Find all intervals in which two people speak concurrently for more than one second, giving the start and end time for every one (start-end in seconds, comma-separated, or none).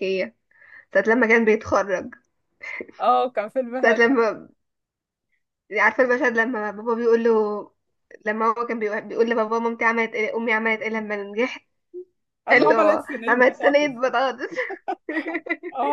12.5-13.9